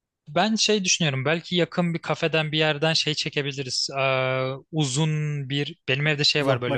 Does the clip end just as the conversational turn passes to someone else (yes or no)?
no